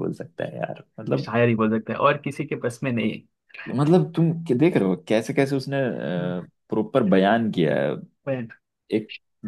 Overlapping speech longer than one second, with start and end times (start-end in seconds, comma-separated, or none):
none